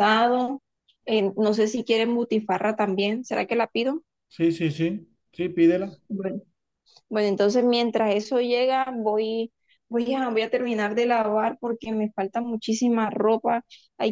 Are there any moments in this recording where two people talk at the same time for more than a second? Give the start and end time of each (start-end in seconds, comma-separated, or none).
none